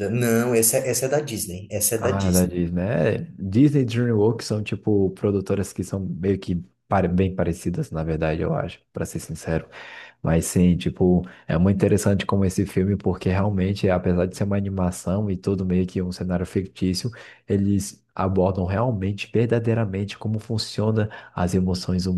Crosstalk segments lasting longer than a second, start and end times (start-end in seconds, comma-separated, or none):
none